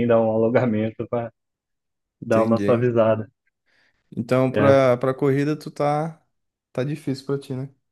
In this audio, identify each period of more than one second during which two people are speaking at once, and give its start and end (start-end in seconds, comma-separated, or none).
none